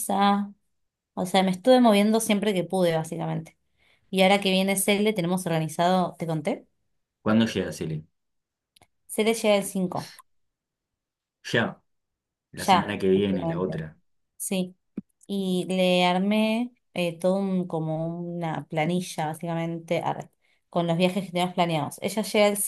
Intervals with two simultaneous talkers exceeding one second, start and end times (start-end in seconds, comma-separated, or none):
12.6-13.8